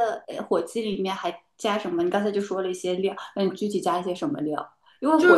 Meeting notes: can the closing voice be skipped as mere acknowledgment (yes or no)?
yes